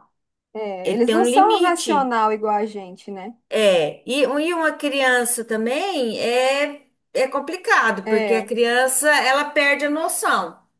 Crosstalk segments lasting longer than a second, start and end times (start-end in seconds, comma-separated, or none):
0.8-2.1